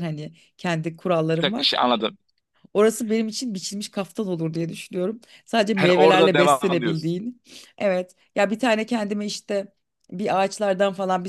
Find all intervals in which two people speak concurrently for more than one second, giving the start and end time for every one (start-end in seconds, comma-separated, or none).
5.7-7.1